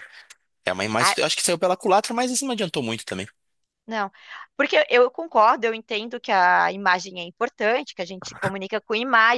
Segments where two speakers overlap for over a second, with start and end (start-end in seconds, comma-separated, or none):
none